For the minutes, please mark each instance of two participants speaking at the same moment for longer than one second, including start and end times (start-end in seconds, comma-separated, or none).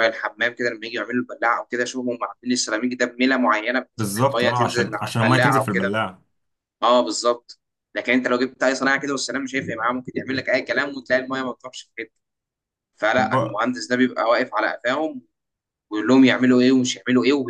4.0-5.9